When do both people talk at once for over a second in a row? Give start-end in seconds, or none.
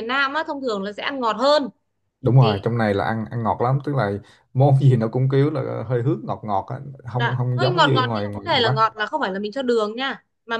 7.2-8.9